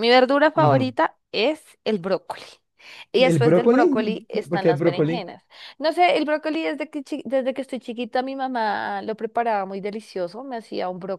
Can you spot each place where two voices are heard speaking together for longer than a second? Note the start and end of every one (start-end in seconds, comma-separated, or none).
3.2-5.3